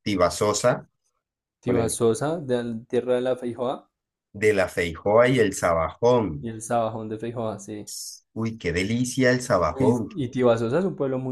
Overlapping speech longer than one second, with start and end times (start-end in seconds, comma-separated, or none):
none